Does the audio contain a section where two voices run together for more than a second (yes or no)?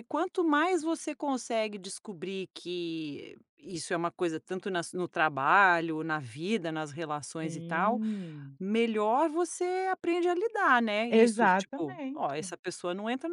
yes